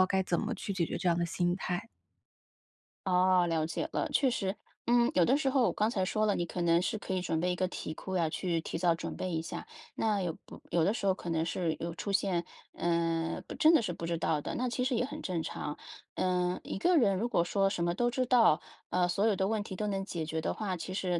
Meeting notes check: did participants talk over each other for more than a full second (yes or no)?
no